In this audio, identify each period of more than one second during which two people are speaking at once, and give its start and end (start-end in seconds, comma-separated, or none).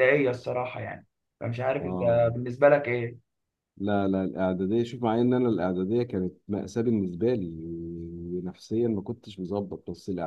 none